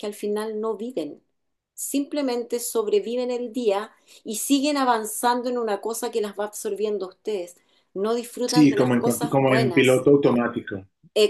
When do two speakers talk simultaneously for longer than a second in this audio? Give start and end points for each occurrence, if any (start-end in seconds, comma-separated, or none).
8.5-10.1